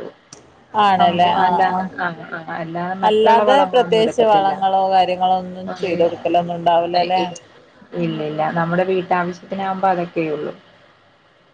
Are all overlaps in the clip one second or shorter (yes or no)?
no